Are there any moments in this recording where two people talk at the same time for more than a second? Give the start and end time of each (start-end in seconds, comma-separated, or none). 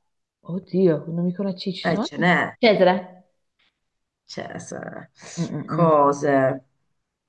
none